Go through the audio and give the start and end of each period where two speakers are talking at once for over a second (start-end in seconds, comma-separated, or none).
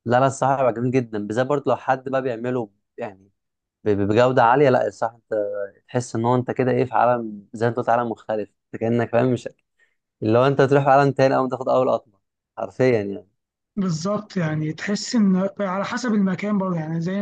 none